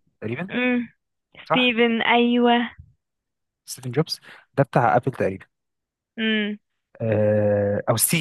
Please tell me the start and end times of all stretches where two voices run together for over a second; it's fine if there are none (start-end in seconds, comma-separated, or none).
none